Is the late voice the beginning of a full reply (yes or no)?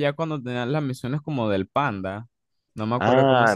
yes